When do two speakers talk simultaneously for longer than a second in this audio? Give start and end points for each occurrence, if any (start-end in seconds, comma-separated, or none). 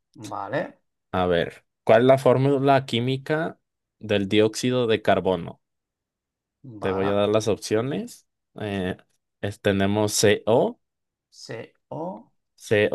none